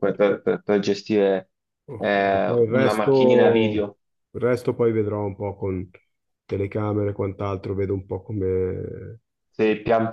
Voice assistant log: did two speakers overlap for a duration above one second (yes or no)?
yes